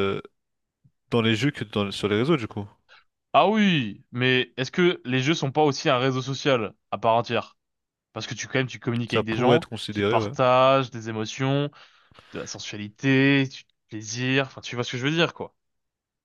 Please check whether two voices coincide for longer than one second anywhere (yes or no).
yes